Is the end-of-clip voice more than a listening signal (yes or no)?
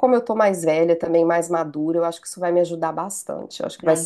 yes